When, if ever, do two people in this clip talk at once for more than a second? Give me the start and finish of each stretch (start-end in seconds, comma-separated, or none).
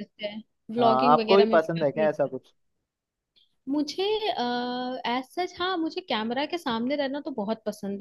0.8-2.1